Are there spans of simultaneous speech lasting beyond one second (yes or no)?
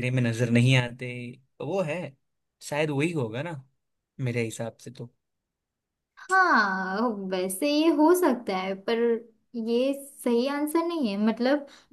no